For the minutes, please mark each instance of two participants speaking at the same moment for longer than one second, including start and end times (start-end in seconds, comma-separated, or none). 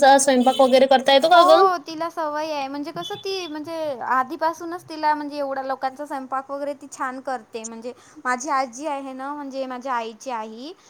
none